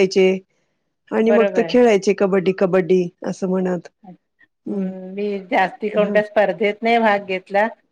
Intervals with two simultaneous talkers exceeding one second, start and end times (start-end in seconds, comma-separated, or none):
none